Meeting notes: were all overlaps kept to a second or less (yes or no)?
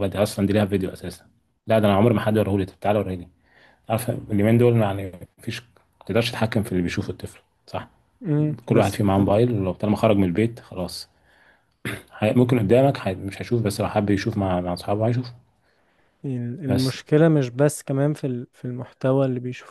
yes